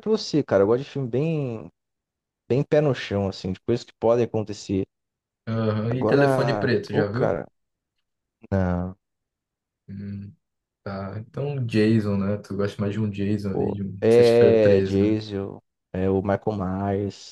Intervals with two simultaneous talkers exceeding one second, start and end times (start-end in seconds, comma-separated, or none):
5.9-7.4, 13.5-15.2